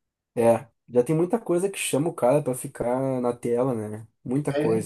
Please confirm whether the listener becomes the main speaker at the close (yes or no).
yes